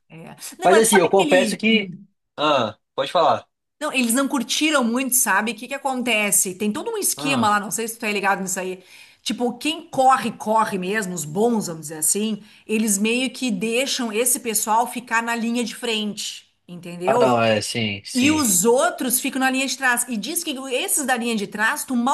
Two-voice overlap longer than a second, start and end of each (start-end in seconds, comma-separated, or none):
0.6-1.9